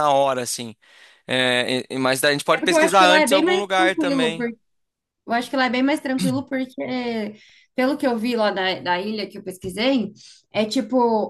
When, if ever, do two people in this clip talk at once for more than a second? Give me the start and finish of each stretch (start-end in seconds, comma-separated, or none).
2.5-4.5